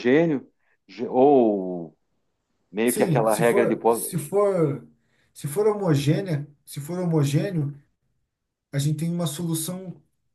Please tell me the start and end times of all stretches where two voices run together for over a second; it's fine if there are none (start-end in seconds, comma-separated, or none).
2.8-4.2